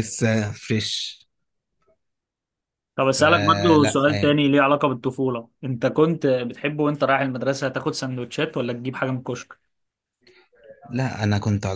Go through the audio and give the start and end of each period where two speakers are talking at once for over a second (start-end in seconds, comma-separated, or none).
3.2-4.4